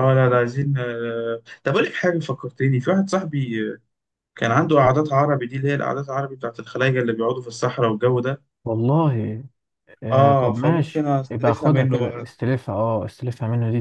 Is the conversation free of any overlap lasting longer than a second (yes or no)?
no